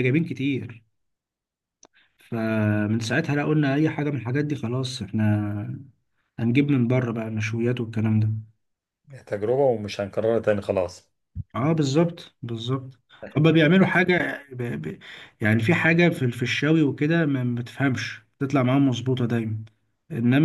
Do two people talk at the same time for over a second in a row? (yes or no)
no